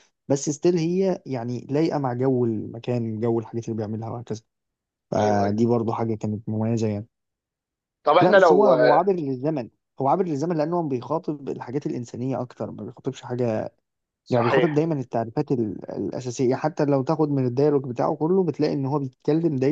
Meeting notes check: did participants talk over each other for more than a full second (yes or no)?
no